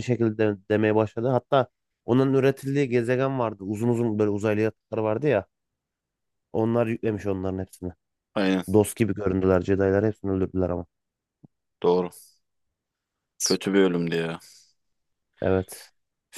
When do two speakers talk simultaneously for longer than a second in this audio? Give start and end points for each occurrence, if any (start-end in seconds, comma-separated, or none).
none